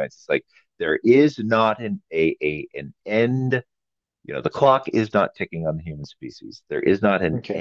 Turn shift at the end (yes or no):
yes